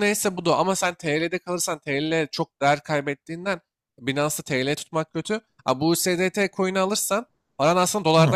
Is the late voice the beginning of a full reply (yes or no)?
no